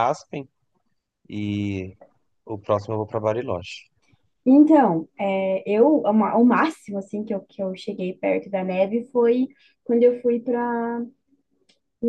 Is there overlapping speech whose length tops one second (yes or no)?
no